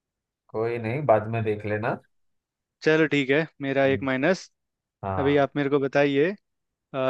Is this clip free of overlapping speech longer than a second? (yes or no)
yes